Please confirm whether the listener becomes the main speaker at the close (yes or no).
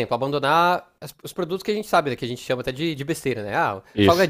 no